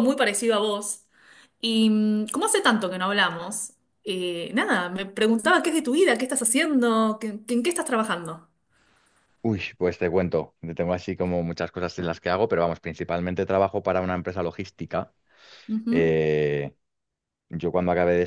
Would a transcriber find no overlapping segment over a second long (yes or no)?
yes